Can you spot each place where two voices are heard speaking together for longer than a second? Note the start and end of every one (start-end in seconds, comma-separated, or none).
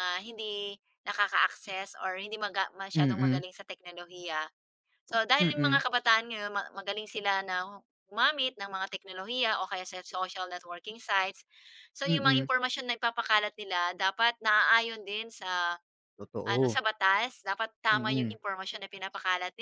none